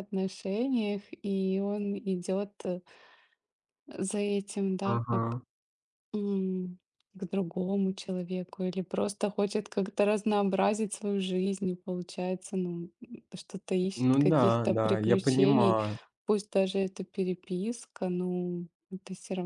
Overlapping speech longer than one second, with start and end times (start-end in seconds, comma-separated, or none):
14.0-15.8